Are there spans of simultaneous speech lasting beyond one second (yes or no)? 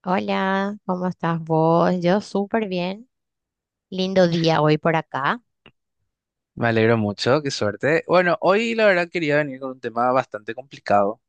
no